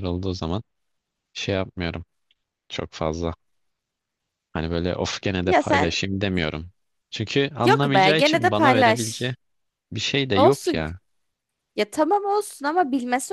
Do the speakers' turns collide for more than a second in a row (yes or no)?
yes